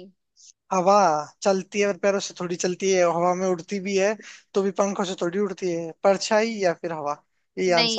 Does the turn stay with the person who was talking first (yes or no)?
no